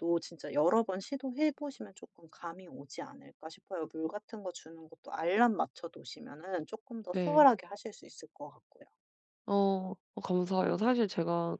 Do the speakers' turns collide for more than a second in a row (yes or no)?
no